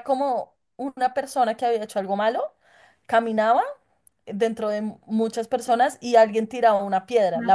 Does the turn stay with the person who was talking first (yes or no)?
yes